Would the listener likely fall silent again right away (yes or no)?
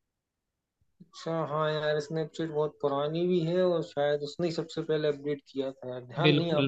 no